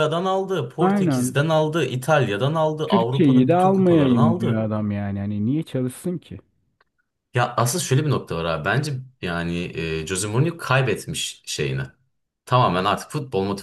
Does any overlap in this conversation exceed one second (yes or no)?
yes